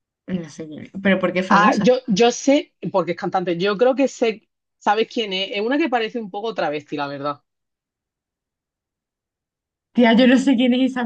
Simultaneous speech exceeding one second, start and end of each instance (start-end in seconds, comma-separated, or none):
none